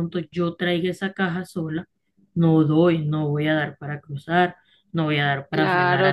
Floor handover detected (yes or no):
yes